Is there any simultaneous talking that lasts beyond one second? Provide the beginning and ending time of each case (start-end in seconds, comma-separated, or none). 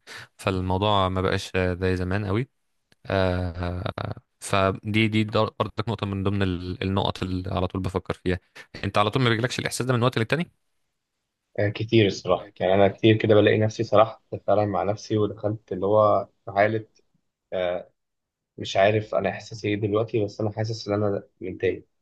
none